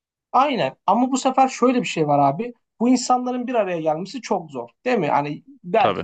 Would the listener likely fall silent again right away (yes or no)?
yes